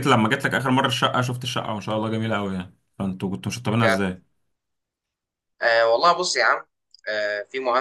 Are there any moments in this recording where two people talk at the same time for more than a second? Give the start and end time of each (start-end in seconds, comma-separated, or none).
none